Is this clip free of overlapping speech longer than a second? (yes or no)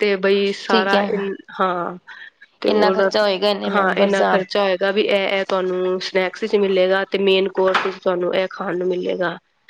yes